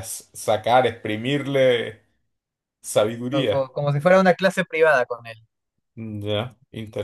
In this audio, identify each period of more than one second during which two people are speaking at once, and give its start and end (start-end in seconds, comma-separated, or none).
none